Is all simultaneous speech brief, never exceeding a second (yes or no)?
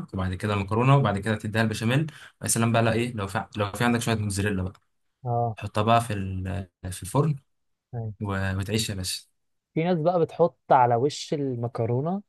yes